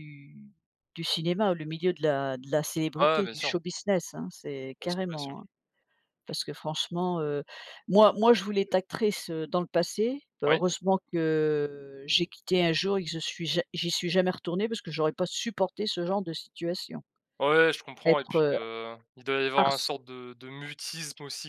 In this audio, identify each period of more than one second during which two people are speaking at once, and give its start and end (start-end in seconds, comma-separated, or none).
none